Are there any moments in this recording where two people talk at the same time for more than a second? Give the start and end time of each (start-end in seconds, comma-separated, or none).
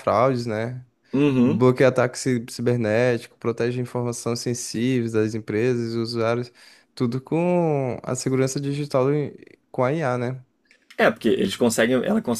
none